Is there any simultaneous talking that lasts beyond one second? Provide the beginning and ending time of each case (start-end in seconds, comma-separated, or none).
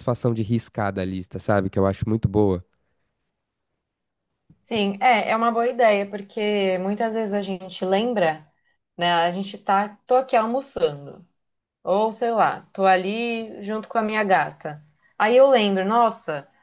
none